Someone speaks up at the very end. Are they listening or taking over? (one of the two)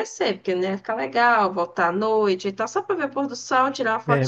taking over